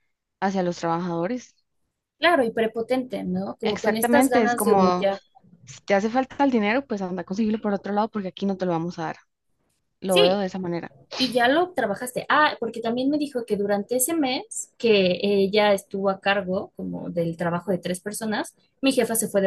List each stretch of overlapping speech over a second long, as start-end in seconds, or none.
3.6-5.1